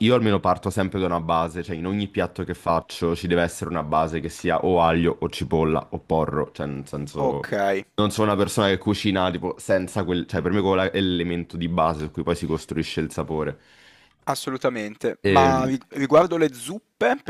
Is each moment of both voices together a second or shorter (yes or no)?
yes